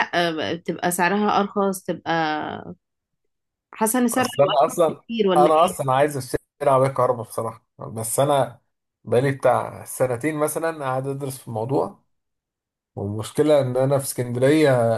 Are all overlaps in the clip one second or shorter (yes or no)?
no